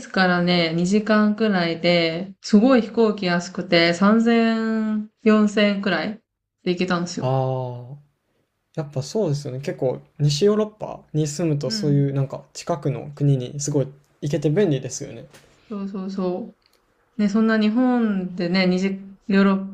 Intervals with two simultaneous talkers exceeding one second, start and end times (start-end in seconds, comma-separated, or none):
none